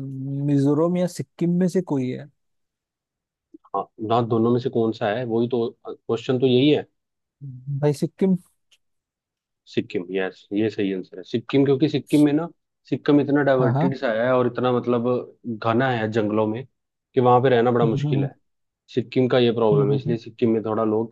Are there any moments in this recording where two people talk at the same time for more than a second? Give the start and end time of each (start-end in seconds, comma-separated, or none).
none